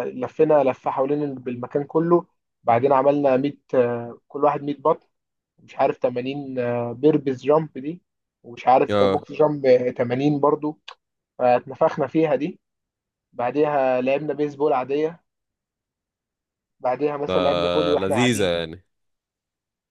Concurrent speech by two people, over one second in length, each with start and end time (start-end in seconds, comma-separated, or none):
17.3-18.5